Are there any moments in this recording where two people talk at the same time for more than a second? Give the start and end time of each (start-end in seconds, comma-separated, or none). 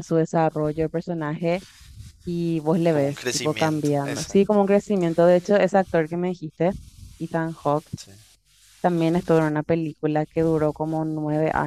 2.9-4.6